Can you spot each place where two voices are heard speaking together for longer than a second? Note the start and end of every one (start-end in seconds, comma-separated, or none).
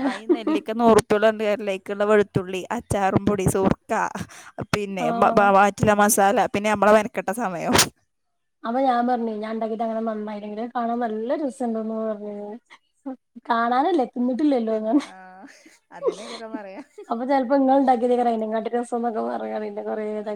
none